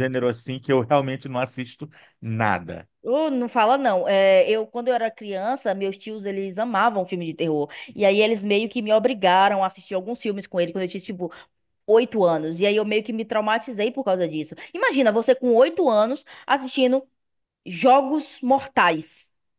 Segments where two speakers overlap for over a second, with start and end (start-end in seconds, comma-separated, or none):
none